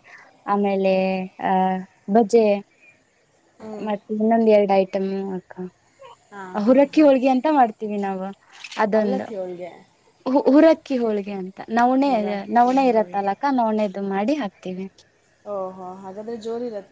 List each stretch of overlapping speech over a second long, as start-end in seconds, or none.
12.1-13.3